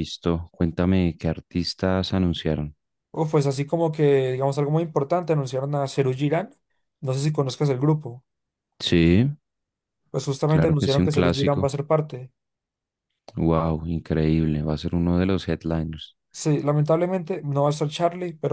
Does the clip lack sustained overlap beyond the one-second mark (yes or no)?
no